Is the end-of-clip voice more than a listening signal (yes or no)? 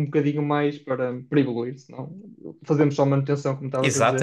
yes